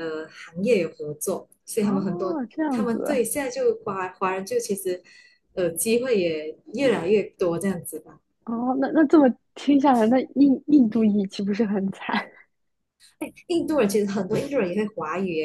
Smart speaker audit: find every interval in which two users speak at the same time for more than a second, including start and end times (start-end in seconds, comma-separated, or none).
1.8-3.2